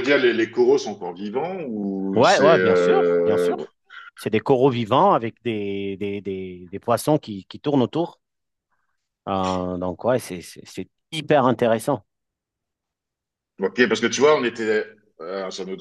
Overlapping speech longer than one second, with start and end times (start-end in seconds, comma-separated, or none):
2.1-3.5